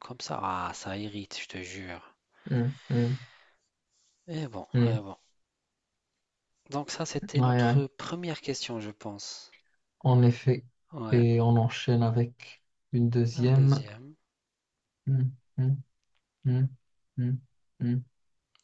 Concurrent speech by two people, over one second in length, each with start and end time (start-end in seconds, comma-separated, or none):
none